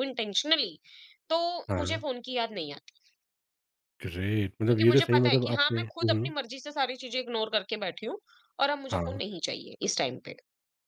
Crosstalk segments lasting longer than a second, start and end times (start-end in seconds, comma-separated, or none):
4.7-6.3